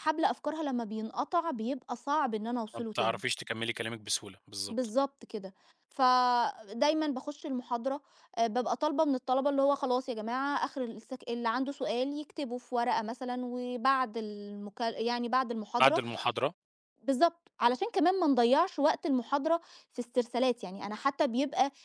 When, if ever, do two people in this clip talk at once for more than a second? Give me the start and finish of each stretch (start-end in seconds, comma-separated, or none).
none